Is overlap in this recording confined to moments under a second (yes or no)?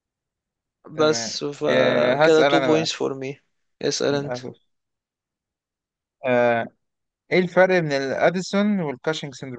no